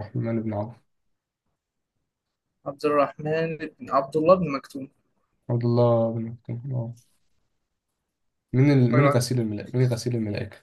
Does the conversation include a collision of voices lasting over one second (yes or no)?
no